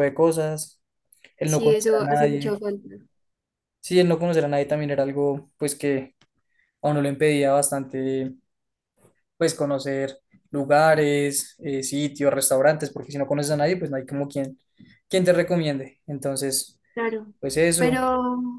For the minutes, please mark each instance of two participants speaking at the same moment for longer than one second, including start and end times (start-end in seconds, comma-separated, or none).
1.4-2.6